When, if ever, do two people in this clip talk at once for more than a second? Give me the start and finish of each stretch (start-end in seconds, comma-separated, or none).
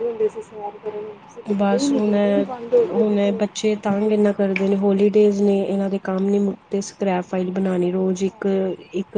none